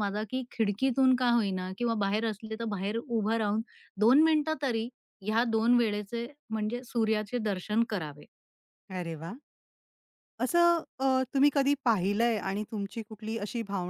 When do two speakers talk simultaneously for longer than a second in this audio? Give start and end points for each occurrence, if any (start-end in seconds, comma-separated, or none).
none